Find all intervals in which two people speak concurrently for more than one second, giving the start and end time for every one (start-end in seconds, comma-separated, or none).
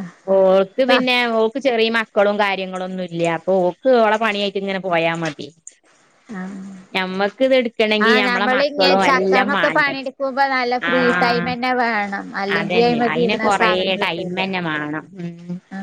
8.1-9.9, 12.6-14.5